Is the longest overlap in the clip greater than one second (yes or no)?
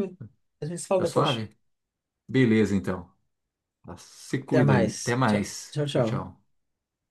yes